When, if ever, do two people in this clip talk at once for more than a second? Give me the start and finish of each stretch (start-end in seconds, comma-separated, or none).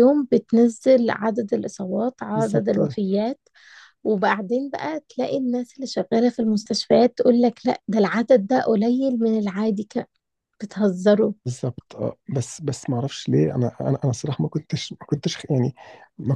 none